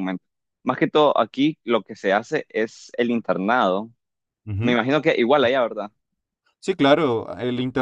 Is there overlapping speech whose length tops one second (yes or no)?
no